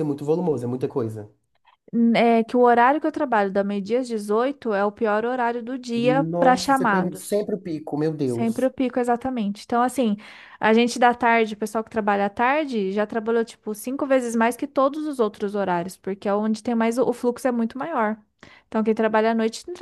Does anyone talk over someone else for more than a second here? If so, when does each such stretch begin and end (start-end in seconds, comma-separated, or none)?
6.0-7.5